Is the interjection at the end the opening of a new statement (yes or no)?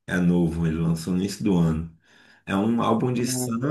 no